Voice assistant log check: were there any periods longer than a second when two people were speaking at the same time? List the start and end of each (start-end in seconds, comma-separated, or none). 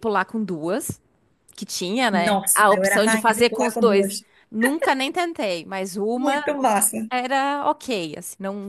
2.1-4.2